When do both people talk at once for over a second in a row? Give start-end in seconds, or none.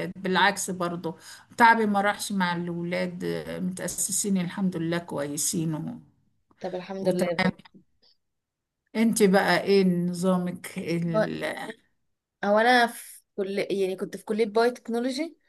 none